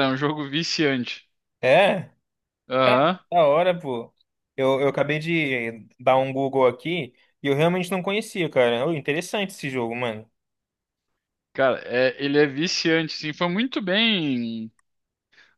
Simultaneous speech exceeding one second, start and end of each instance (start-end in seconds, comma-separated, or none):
none